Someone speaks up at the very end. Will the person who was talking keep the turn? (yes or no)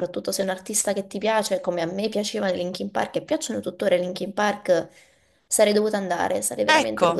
no